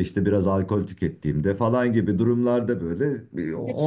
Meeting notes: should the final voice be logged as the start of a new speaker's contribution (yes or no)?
yes